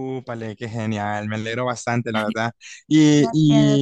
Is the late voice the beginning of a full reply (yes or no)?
no